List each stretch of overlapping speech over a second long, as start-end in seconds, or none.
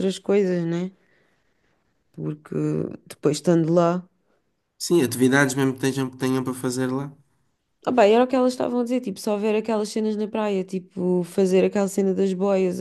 none